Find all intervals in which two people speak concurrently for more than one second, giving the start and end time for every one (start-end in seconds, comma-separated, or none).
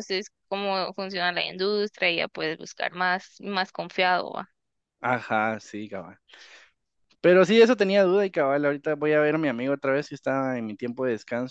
none